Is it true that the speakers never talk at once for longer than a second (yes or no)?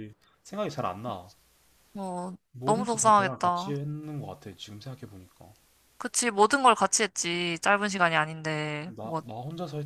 no